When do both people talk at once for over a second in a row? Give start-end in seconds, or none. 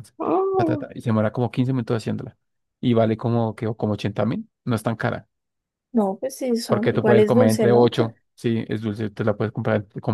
6.7-7.9